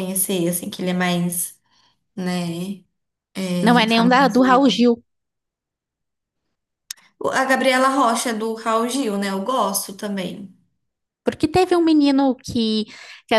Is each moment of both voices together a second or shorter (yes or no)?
no